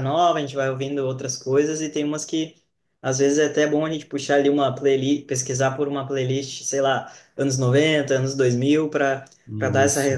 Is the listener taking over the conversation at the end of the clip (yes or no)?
no